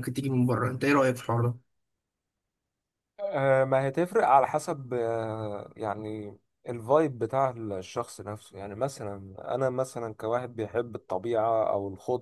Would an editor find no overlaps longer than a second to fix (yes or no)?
yes